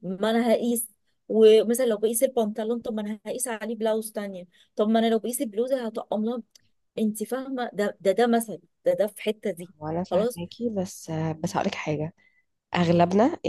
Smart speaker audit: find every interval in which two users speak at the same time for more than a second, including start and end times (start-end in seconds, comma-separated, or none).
none